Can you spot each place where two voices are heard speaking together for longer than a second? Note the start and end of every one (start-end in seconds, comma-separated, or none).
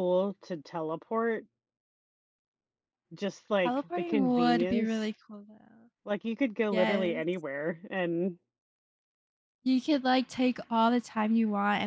3.6-5.1